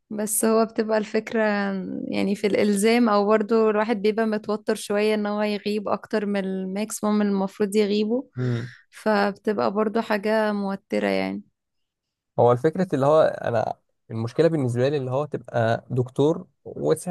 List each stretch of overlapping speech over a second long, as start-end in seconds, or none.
none